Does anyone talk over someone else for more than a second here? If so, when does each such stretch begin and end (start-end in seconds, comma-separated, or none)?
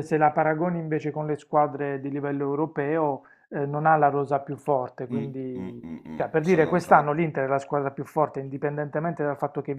5.1-7.1